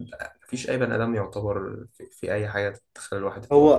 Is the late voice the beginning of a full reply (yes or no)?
yes